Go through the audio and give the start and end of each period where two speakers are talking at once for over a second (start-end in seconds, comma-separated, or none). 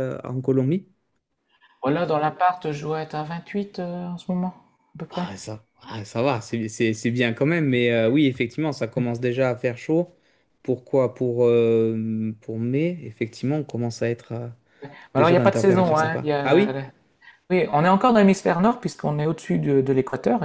15.2-16.7